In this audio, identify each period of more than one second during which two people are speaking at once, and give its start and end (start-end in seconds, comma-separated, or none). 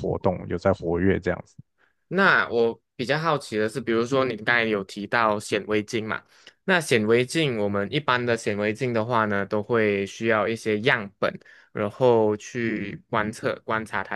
none